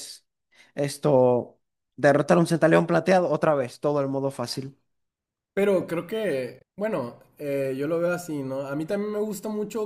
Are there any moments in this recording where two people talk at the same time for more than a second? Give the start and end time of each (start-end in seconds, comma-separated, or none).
none